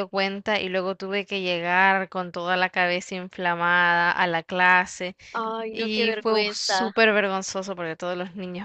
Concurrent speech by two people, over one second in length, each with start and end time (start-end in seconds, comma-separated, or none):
5.7-6.9